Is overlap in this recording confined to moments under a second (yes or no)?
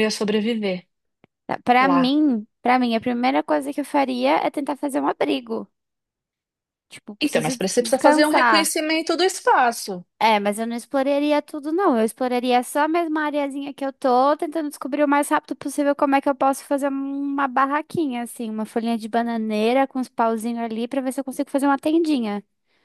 no